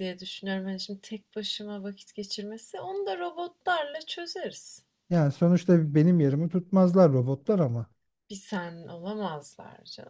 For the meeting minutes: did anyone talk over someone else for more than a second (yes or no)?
no